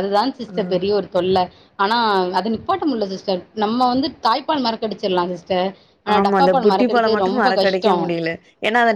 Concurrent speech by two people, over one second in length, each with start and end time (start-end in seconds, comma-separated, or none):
6.2-8.1